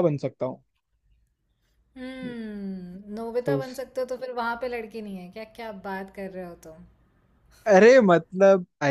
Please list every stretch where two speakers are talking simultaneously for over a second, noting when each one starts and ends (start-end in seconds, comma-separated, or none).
none